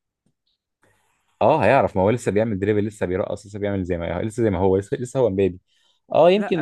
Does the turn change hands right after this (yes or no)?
no